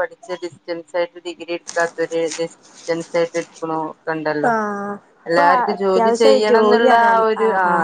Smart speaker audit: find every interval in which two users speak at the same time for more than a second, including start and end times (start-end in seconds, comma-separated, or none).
5.3-7.2